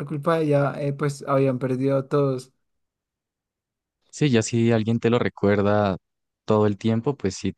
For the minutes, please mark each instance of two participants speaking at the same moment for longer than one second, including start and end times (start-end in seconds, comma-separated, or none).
none